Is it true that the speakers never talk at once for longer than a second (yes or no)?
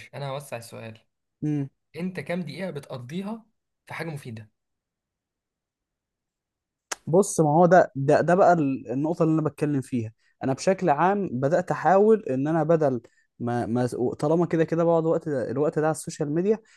yes